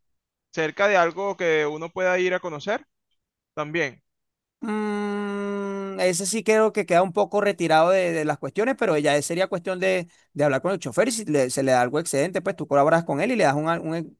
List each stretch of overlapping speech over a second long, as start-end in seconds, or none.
none